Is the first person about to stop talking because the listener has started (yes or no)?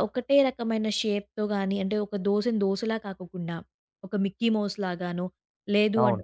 no